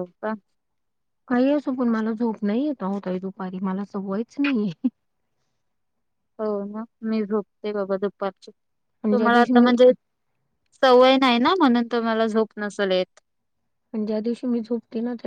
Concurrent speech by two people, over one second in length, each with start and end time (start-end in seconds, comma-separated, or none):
none